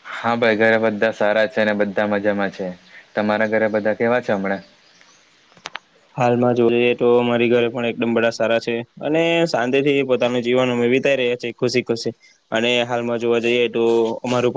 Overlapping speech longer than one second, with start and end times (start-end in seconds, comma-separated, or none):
none